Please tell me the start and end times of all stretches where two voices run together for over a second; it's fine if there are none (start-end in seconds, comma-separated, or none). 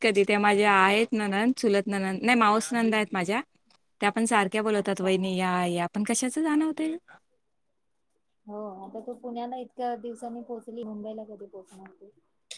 none